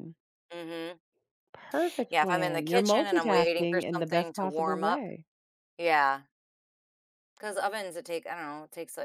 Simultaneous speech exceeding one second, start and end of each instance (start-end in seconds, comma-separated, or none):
2.1-5.1